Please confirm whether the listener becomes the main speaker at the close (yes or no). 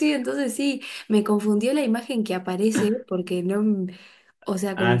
yes